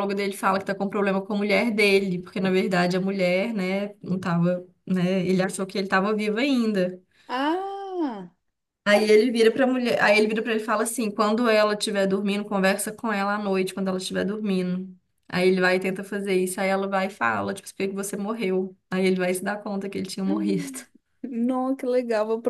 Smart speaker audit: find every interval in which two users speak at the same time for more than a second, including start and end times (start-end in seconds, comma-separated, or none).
none